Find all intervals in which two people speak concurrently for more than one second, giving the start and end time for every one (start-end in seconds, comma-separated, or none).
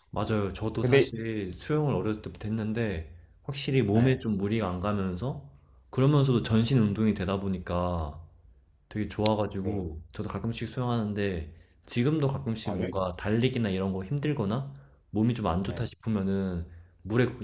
none